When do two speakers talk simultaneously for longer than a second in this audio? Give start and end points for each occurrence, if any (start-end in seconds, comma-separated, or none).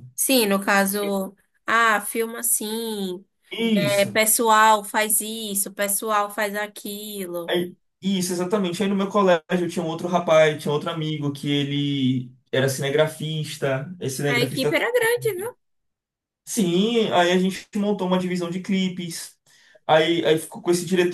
14.3-15.5